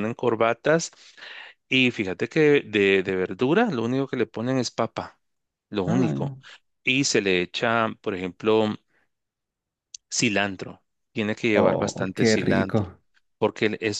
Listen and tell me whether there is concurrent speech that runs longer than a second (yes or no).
yes